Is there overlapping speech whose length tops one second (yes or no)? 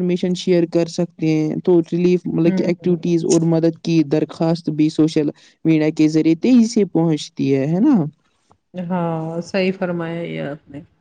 no